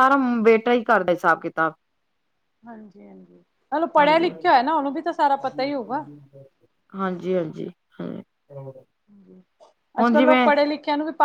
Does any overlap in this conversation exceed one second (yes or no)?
no